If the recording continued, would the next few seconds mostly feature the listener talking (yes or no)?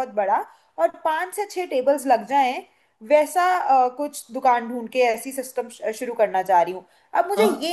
no